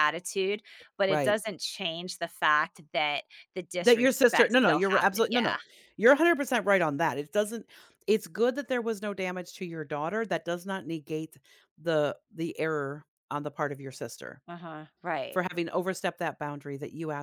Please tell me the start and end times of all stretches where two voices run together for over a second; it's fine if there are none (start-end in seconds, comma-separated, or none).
3.8-5.5